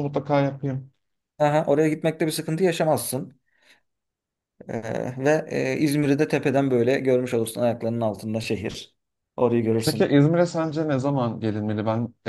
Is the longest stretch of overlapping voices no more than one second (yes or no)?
yes